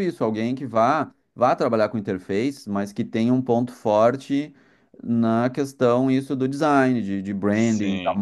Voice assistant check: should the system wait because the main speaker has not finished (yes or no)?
yes